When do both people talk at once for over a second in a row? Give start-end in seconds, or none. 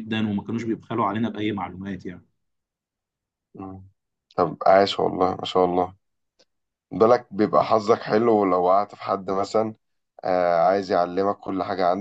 none